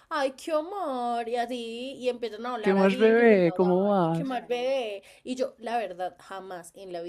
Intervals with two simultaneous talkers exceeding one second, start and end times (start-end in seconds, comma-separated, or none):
2.6-4.4